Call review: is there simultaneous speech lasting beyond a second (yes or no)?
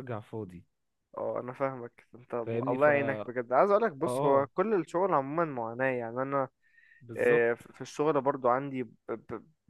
no